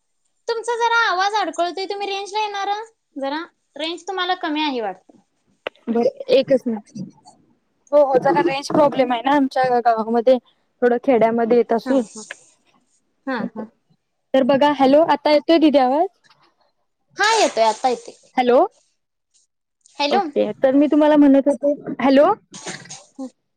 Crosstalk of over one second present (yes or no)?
no